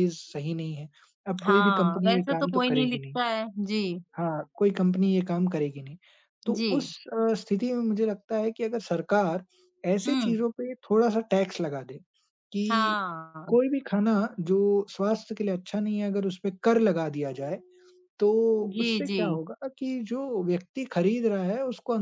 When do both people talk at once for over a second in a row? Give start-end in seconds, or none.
1.4-3.2